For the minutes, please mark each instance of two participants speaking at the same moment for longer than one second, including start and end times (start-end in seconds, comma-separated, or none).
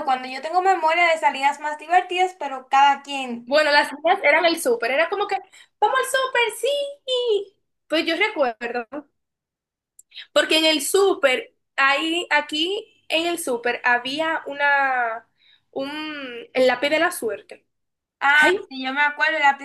none